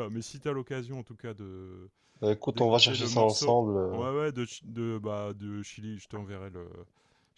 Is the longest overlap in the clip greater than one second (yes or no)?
yes